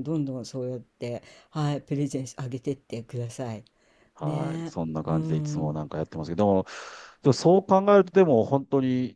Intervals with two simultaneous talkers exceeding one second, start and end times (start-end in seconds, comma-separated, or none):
4.2-5.8